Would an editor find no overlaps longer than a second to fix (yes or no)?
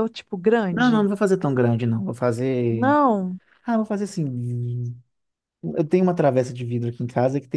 yes